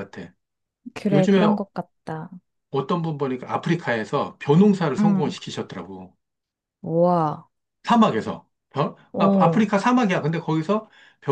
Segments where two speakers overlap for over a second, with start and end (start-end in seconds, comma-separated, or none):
none